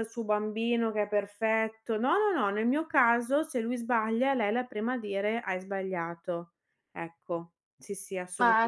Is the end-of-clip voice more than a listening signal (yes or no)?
yes